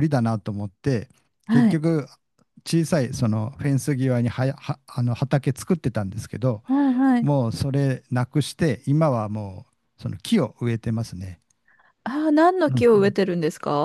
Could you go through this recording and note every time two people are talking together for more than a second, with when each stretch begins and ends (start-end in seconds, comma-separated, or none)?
none